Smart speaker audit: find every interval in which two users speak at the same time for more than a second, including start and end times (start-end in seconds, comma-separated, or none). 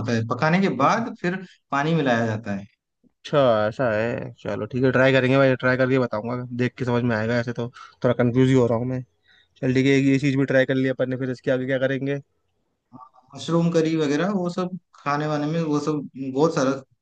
none